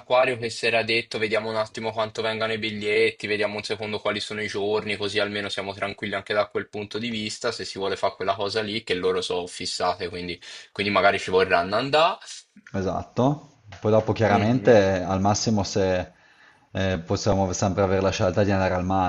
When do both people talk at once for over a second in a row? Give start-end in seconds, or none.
none